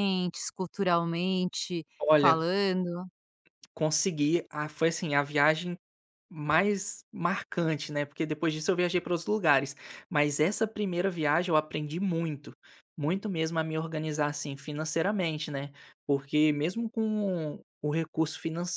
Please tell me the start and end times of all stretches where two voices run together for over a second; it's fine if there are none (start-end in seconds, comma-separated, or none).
none